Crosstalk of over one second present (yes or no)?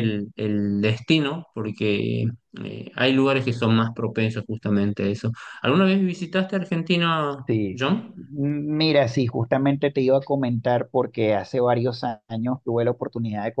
no